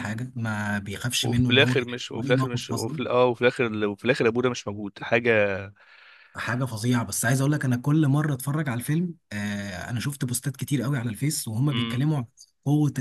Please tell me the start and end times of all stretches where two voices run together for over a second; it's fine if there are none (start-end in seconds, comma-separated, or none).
1.2-3.0